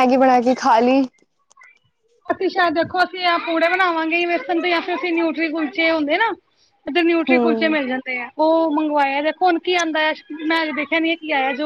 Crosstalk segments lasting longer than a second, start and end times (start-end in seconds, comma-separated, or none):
none